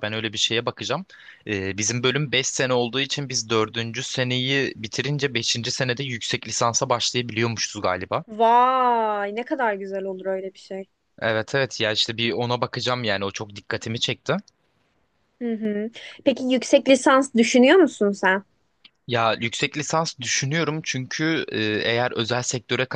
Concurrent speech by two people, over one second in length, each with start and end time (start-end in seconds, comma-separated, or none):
none